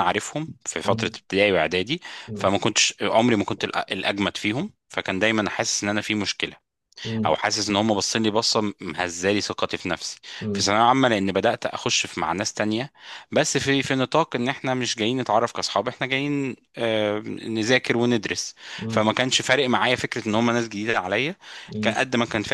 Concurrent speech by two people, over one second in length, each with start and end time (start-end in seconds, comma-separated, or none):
none